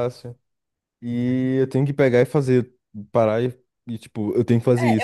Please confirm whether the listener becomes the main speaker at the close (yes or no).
yes